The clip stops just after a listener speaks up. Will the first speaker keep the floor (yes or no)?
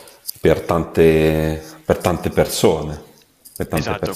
no